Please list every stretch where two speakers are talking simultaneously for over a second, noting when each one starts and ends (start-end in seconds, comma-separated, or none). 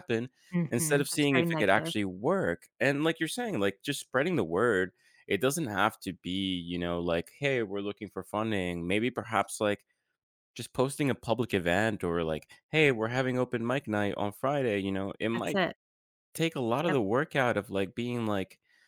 0.7-1.9